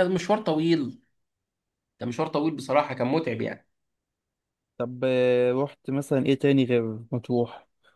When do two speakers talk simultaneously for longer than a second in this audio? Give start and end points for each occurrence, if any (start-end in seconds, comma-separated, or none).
none